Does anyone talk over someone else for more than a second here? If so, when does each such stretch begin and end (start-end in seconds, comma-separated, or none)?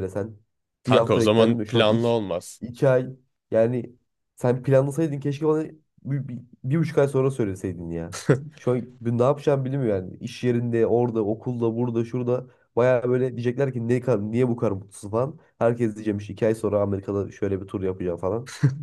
0.8-2.2